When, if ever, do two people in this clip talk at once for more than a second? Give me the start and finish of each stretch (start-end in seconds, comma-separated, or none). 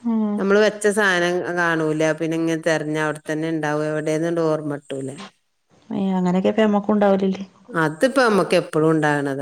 none